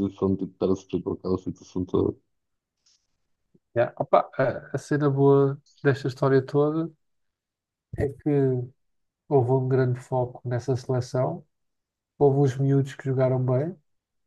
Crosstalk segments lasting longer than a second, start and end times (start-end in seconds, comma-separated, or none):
none